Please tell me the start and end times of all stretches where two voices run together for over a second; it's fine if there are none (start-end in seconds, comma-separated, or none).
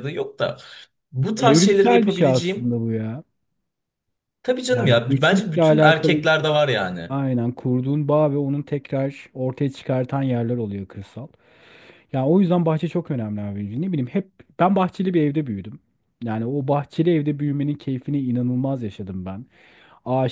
1.4-2.8, 4.7-6.2